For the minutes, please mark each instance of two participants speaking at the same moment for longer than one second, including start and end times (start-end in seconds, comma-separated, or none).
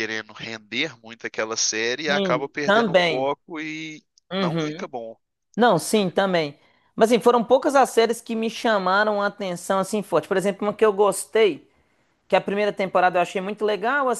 2.1-3.3